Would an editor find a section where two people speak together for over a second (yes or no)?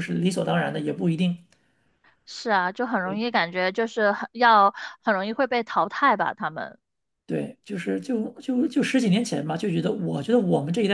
no